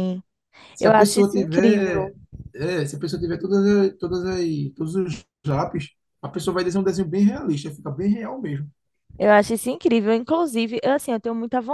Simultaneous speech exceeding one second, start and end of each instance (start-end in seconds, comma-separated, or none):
0.8-2.1